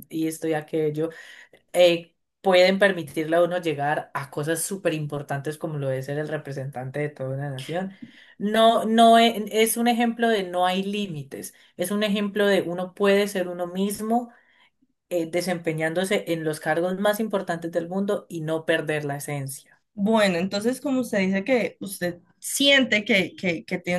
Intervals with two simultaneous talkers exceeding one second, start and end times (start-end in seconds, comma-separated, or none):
none